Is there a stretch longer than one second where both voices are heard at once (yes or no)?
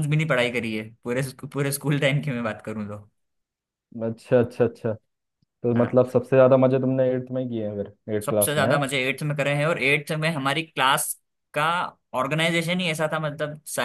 no